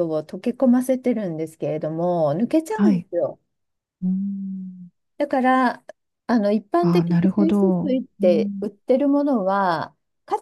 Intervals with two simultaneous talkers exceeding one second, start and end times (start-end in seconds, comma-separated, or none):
6.8-8.7